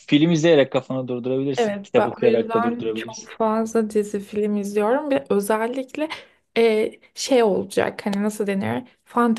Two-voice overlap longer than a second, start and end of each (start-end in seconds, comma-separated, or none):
1.6-3.3